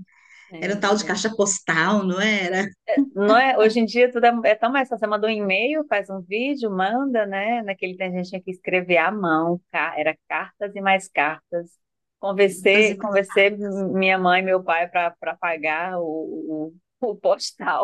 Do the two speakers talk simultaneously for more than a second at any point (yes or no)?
no